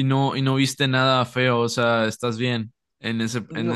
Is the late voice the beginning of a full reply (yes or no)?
yes